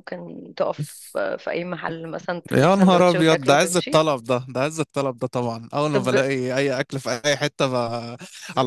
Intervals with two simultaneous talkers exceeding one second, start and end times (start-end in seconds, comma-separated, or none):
2.5-4.0